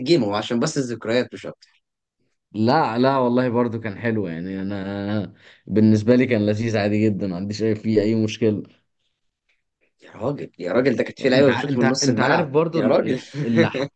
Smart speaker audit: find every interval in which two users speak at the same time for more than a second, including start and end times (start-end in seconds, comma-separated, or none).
11.2-13.2